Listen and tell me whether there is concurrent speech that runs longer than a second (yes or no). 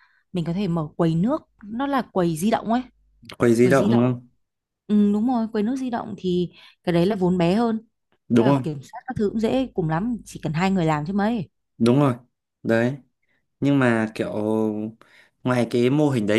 no